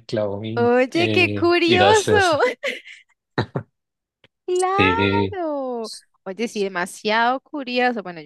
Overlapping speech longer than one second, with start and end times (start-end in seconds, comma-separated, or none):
0.6-2.1